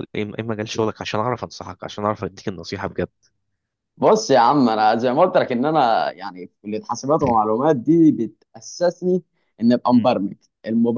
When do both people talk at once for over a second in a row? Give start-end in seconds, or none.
none